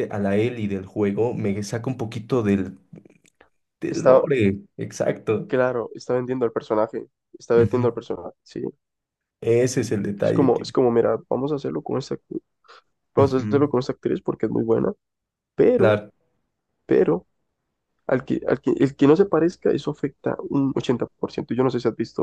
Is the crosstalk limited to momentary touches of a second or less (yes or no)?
yes